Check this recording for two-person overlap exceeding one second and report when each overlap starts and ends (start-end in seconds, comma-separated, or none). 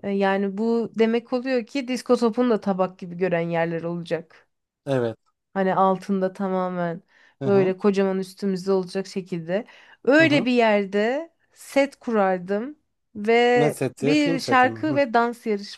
13.6-15.0